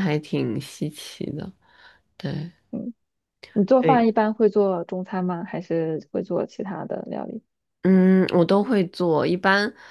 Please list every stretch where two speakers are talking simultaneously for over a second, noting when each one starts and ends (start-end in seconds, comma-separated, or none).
none